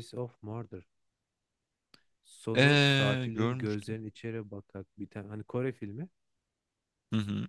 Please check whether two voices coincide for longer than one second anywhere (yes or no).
yes